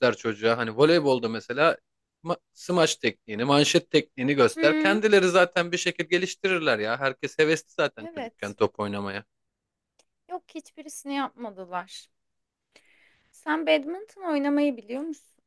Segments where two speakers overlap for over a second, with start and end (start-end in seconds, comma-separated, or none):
none